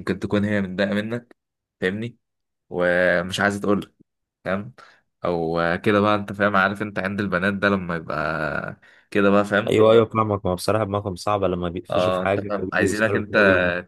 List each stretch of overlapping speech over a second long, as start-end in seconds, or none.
11.9-13.3